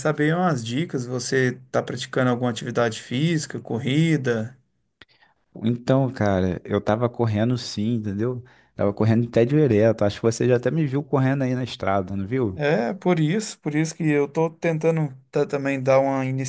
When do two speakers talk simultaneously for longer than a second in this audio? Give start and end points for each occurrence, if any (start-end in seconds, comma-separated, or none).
none